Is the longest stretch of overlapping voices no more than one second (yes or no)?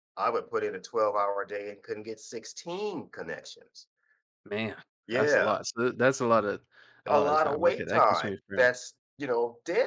no